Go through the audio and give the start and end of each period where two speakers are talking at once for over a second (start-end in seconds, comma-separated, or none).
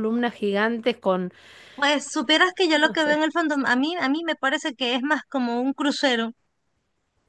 none